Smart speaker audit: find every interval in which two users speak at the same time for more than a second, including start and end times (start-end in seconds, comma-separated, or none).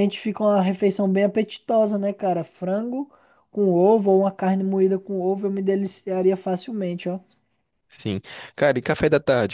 none